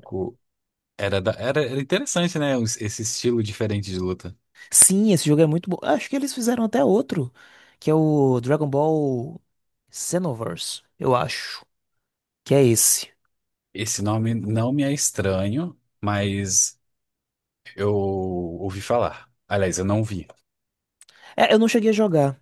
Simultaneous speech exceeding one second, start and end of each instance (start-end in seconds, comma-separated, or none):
none